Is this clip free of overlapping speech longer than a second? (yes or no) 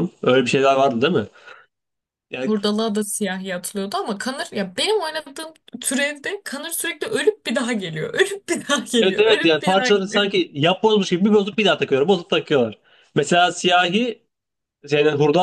no